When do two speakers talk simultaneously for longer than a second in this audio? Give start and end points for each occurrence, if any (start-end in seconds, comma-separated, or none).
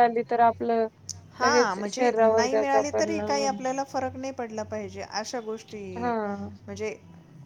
1.4-3.6